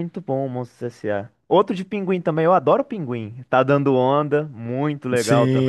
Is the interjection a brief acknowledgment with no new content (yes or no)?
no